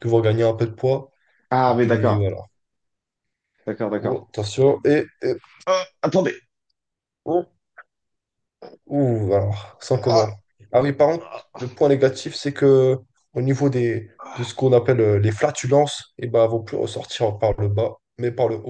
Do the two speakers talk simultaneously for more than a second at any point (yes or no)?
no